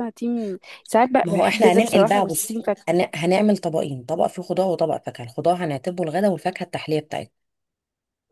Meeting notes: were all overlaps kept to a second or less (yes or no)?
no